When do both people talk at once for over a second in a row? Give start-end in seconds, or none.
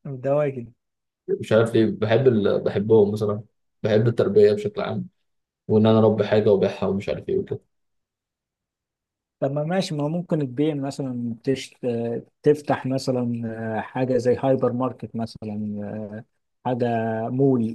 none